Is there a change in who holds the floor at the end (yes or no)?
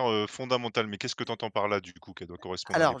yes